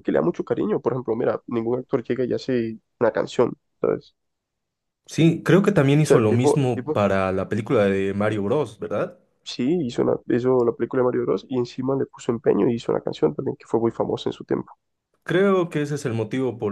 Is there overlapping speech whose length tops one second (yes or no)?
yes